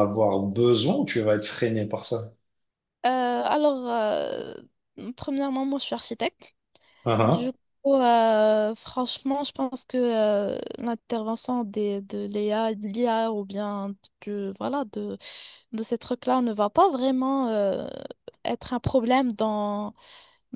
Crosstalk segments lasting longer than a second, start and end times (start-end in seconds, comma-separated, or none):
none